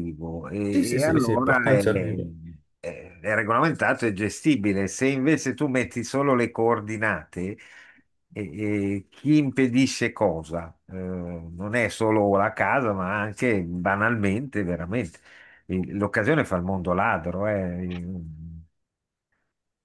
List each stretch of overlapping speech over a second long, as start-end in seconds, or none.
0.7-2.2